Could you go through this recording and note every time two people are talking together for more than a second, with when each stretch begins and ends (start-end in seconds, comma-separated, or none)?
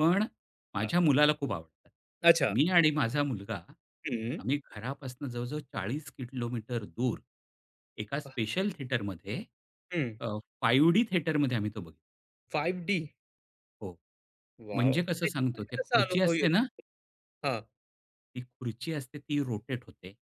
14.7-16.5